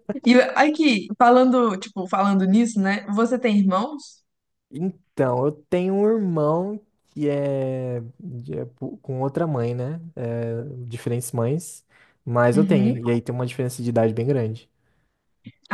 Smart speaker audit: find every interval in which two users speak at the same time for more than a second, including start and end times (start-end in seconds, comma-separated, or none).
none